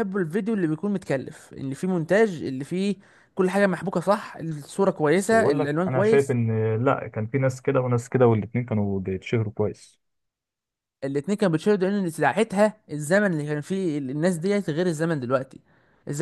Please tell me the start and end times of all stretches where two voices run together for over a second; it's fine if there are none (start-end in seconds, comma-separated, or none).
5.1-6.4